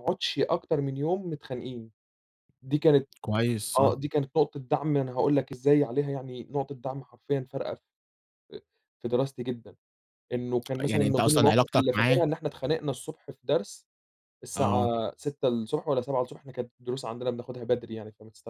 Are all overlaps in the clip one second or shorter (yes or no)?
no